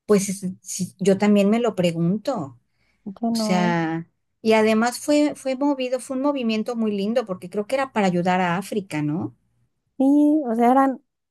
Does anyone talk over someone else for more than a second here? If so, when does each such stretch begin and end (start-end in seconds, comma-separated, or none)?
none